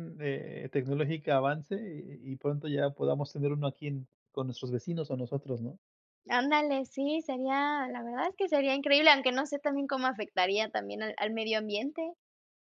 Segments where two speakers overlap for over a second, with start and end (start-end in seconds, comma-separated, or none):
none